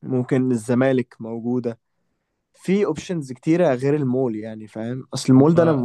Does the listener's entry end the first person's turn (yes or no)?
no